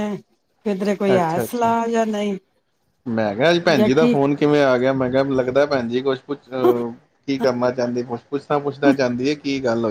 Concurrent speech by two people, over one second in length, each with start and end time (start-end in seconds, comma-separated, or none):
none